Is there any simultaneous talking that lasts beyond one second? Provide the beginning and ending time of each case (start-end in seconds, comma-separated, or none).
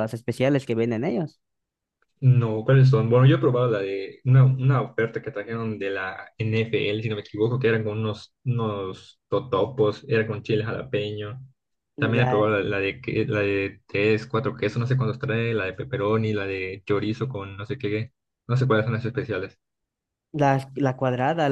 none